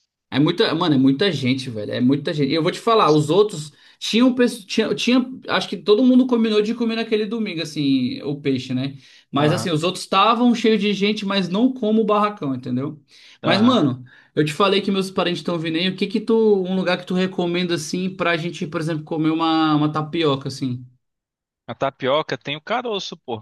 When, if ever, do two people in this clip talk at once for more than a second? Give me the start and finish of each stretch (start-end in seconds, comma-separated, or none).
none